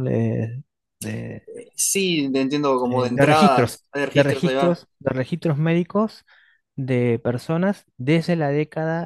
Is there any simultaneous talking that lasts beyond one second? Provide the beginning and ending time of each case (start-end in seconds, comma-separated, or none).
2.9-4.8